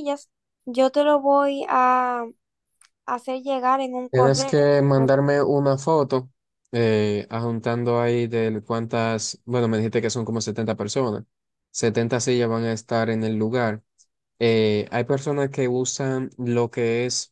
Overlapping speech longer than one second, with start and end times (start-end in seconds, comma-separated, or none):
none